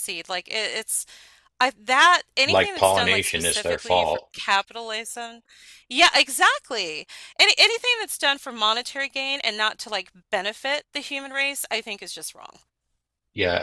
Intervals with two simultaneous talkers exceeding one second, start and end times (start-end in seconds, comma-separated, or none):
2.5-4.3